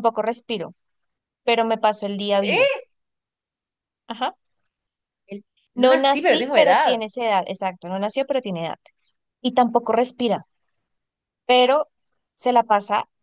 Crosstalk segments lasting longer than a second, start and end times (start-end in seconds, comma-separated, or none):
5.7-7.0